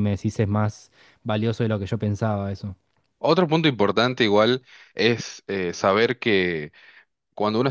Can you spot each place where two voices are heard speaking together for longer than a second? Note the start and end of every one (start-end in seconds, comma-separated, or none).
none